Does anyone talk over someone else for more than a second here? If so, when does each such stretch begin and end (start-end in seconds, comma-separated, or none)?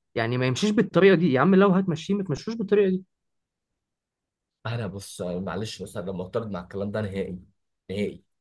none